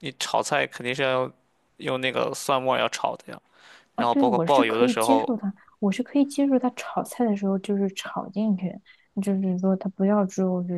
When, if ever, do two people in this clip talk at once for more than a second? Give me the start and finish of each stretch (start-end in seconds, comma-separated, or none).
4.0-5.3